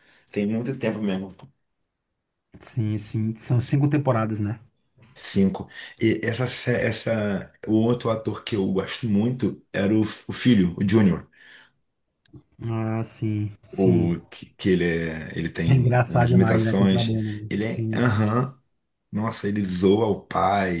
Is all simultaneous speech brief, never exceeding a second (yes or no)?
no